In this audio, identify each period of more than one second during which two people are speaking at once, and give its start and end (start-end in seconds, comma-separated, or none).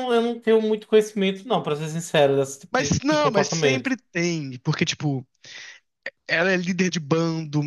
2.7-4.0